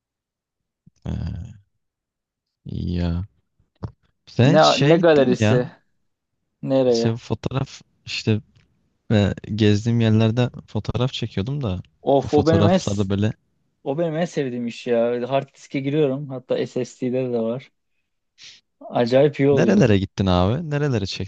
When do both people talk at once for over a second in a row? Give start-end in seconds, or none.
4.4-5.6